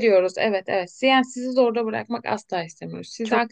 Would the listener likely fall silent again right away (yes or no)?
yes